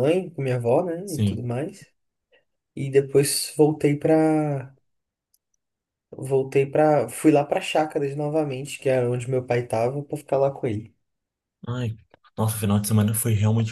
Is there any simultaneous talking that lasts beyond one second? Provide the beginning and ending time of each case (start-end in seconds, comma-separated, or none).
none